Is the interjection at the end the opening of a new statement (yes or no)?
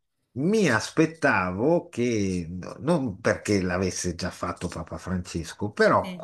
no